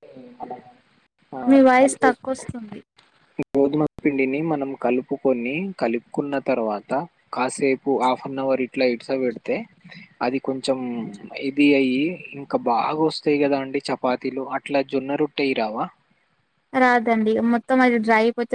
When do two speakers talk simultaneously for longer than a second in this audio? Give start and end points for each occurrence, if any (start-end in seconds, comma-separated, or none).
none